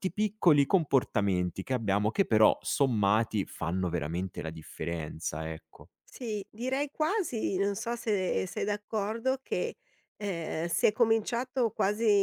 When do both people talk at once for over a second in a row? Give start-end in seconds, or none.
none